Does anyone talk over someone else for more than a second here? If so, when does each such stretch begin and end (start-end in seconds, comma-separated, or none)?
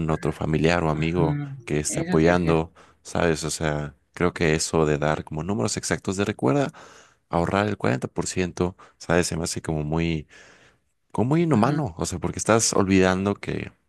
0.9-2.6